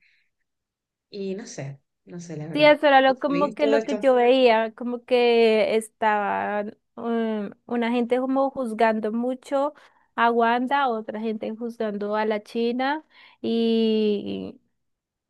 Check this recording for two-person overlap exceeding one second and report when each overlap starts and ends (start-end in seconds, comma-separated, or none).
2.5-4.0